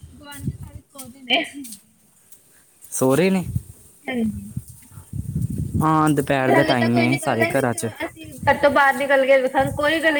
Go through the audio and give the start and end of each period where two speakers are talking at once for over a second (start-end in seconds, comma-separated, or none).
6.2-7.9